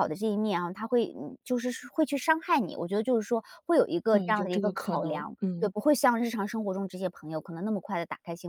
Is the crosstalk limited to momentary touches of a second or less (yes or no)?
no